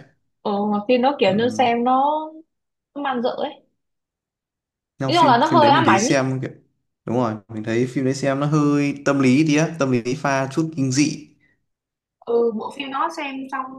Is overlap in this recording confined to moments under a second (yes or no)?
no